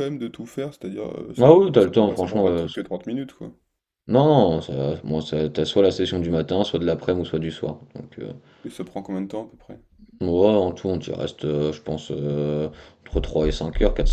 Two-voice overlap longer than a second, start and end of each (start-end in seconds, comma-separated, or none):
1.4-2.7